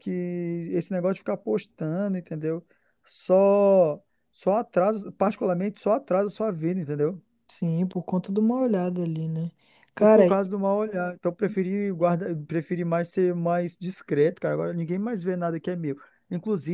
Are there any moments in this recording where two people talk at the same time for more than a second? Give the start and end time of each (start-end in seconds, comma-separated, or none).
none